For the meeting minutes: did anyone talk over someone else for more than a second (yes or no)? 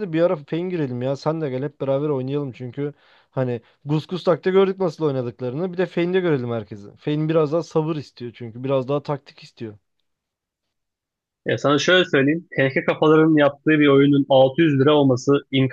no